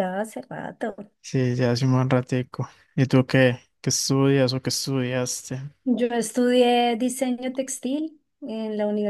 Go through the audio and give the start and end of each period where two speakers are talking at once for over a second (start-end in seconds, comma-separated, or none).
none